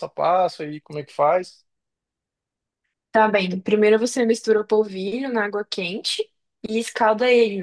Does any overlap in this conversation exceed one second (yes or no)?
no